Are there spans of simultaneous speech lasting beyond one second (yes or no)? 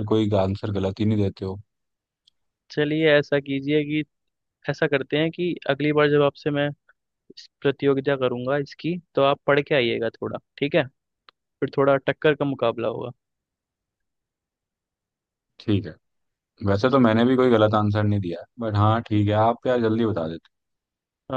no